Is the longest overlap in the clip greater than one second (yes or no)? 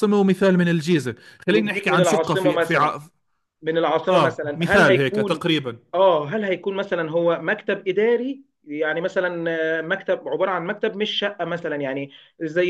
yes